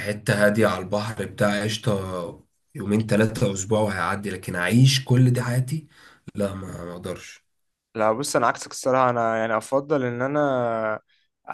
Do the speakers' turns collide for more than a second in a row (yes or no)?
no